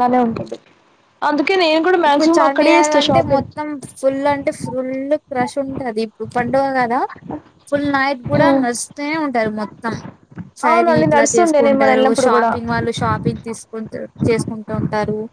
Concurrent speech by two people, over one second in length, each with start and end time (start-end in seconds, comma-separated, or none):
10.7-12.5